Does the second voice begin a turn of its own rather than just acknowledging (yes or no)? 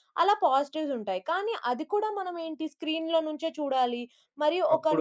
no